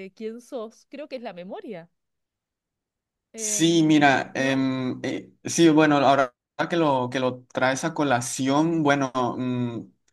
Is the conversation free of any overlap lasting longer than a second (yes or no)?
no